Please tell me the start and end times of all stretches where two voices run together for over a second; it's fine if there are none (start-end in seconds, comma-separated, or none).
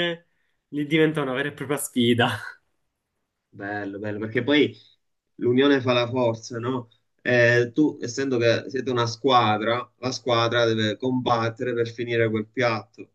none